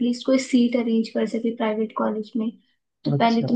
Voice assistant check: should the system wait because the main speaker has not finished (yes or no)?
yes